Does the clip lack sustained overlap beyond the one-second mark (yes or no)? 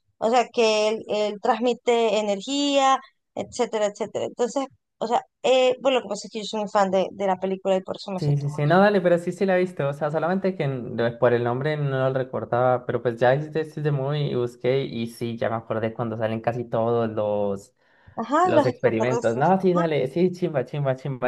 no